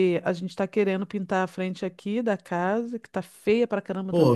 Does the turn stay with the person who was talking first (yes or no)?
no